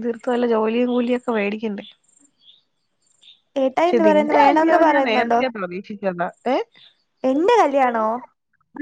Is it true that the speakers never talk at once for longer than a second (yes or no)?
no